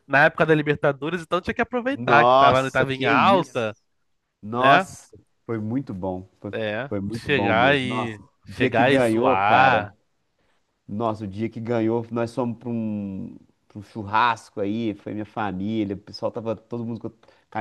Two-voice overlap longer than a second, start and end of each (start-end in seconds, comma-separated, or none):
1.9-3.7, 6.5-9.9